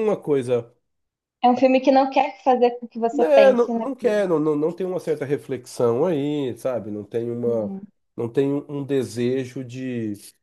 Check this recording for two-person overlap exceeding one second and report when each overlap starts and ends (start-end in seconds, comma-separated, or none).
3.1-4.3